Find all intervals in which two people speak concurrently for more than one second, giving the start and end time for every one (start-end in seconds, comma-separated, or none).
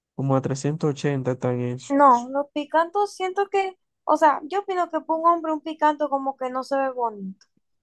none